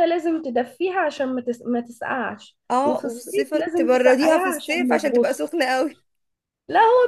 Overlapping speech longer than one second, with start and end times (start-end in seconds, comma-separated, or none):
2.7-5.5